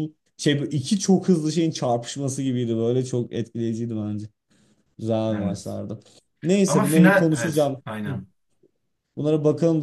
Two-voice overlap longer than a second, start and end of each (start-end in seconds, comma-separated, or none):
6.7-8.2